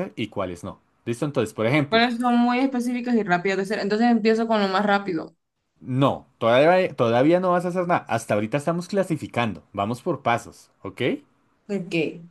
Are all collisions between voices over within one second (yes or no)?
yes